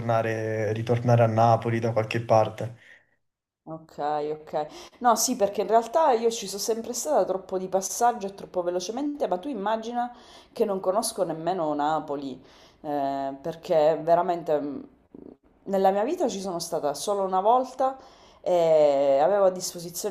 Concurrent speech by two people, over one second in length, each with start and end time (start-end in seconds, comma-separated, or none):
none